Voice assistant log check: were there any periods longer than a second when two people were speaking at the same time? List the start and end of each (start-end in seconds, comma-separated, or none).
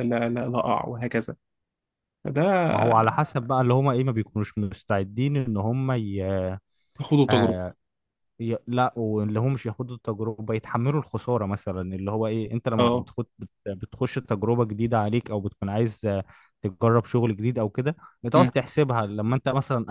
none